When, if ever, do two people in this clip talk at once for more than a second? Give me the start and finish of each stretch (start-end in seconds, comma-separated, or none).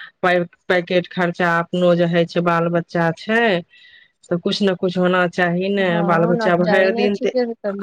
5.8-7.3